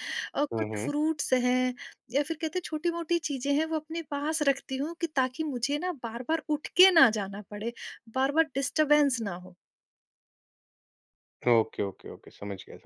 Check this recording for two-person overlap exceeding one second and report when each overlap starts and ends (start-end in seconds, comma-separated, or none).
none